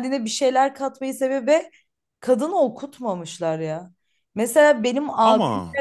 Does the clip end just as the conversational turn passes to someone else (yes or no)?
no